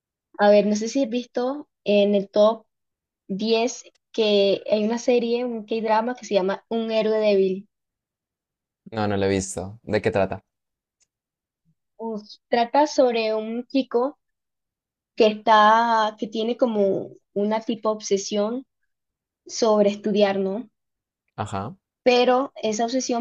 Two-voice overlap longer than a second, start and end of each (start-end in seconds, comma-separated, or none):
none